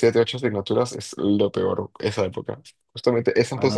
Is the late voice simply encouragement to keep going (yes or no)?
no